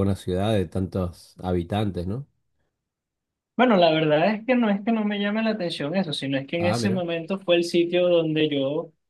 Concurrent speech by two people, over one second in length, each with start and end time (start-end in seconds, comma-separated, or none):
none